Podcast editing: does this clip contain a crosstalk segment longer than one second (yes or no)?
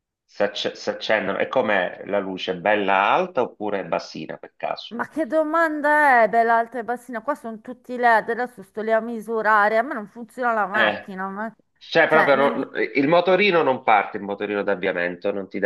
no